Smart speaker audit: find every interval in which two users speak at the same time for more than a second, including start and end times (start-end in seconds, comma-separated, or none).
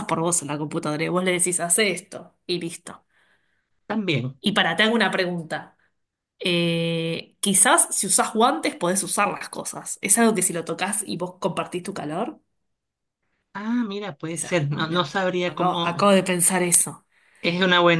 14.3-16.1